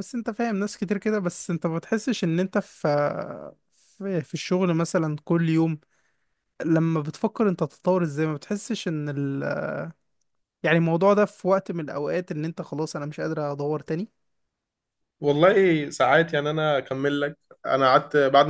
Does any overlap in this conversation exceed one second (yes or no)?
no